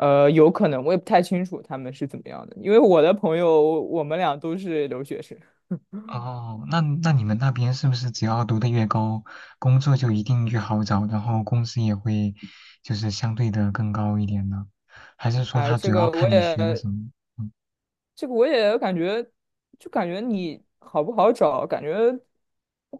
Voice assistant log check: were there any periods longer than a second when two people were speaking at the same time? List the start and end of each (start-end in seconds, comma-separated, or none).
15.5-16.8